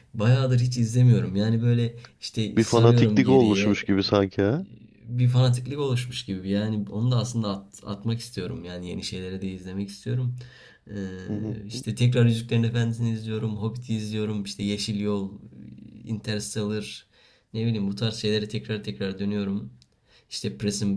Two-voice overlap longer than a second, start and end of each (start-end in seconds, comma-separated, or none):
2.6-3.8